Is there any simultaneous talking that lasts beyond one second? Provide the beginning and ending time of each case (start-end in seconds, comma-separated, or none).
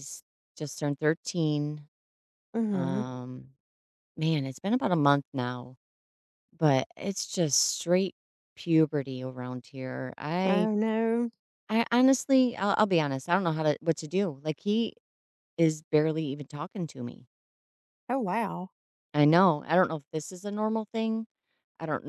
none